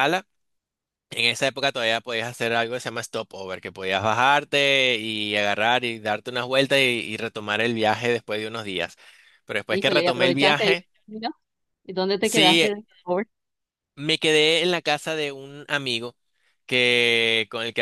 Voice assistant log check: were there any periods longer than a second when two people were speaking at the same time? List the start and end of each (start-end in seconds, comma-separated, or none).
9.7-10.9